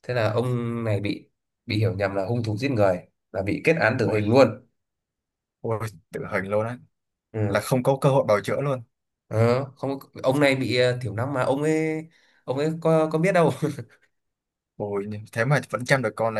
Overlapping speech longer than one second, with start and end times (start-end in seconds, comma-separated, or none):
none